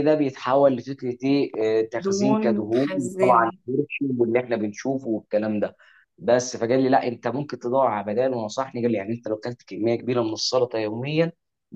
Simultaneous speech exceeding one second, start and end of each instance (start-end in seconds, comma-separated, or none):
2.0-3.6